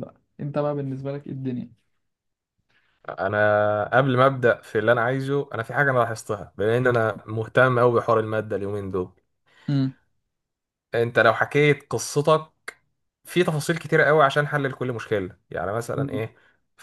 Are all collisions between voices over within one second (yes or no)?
yes